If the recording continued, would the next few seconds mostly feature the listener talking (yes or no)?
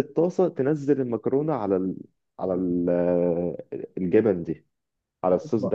yes